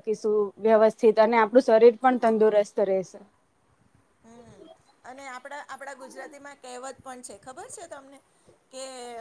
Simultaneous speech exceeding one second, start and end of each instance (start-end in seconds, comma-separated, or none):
none